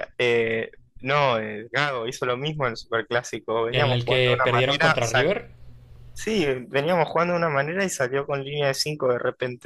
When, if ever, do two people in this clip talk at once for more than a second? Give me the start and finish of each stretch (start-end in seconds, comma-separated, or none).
3.7-5.3